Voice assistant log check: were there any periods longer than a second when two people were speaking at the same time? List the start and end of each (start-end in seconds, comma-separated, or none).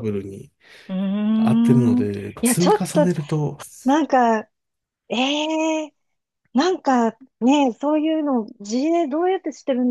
1.4-3.1